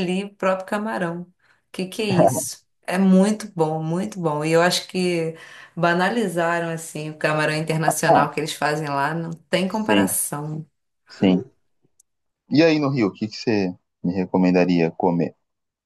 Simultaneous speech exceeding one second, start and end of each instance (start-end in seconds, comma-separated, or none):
none